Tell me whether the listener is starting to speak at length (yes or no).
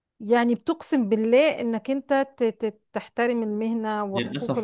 yes